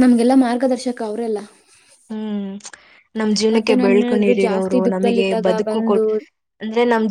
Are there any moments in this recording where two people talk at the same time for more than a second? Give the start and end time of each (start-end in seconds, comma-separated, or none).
3.8-6.0